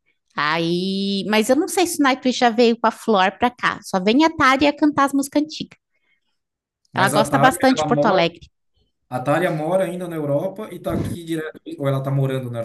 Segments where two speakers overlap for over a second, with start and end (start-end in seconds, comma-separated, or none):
6.9-8.3